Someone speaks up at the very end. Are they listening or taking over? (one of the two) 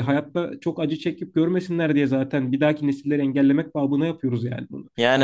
listening